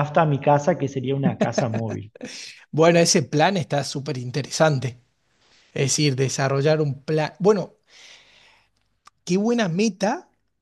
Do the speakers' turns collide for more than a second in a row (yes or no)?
no